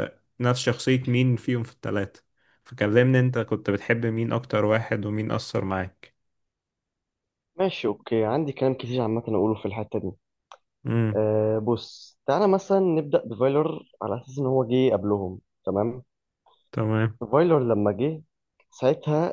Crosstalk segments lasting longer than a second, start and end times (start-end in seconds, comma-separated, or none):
none